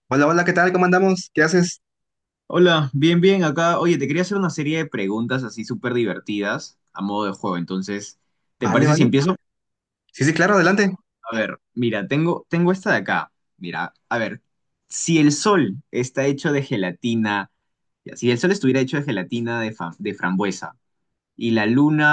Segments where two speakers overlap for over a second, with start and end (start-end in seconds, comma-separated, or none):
none